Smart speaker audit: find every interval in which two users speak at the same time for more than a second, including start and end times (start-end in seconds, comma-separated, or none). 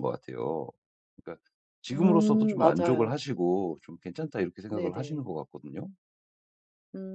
1.9-3.2